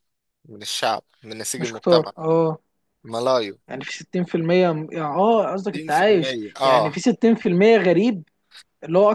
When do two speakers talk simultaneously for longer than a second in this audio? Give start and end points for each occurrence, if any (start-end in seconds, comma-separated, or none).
5.7-7.0